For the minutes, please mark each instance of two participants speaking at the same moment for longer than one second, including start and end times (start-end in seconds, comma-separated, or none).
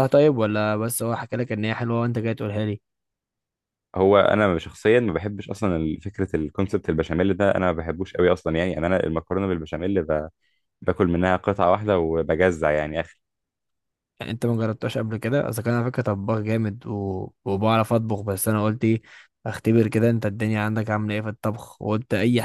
none